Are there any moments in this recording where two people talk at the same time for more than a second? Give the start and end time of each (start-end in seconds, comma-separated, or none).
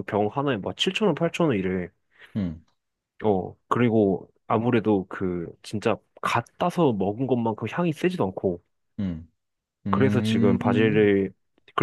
9.9-11.1